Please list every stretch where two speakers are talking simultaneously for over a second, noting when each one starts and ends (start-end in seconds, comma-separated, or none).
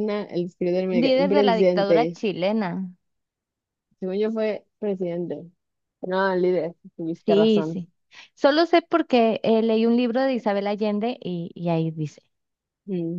0.9-2.2